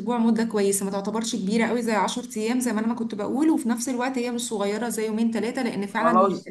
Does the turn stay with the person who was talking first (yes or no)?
no